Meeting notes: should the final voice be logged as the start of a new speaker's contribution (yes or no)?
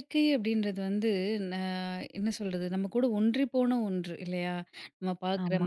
no